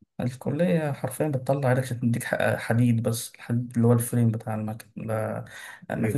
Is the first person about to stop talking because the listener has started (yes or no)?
no